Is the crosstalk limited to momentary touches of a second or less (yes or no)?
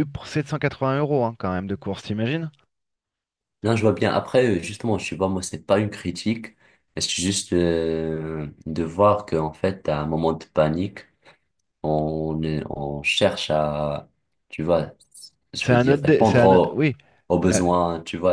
no